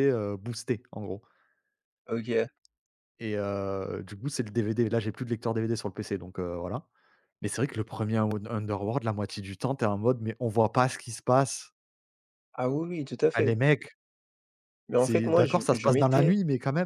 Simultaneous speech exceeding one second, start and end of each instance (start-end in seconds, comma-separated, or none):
14.9-16.4